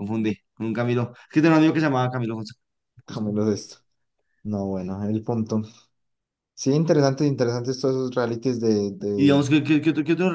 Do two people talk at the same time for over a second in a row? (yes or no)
no